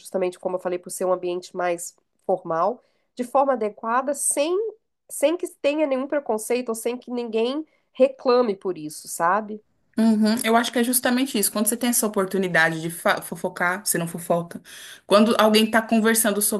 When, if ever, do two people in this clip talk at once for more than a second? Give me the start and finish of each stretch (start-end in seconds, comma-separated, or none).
none